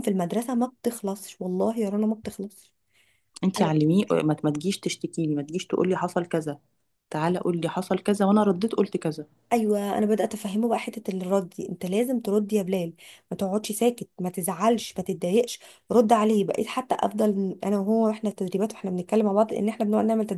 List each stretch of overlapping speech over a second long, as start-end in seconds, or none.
none